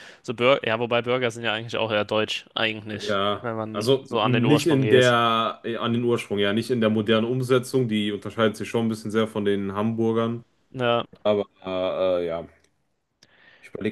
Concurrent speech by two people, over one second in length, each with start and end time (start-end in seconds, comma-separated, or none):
3.1-5.1